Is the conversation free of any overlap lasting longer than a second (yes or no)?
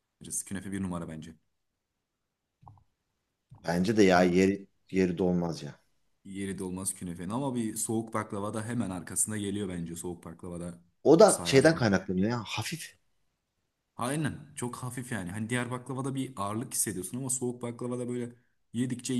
yes